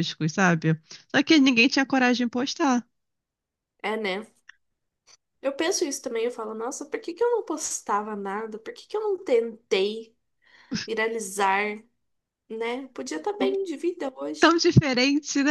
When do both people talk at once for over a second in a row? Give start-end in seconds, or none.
none